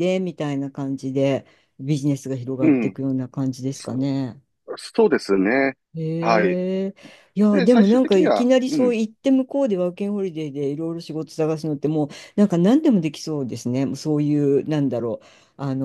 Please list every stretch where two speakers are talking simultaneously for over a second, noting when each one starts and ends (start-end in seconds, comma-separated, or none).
7.5-9.0